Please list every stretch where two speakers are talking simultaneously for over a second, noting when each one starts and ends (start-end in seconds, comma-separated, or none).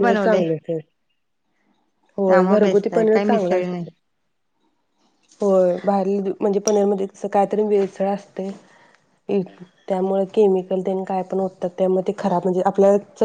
2.3-3.8